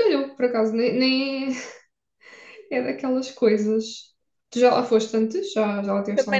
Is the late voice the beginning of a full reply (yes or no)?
yes